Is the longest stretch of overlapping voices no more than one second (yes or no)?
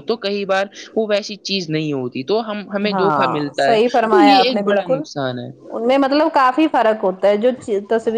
no